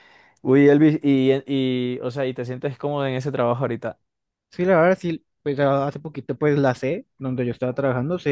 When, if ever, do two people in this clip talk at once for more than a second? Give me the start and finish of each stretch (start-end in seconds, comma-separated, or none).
none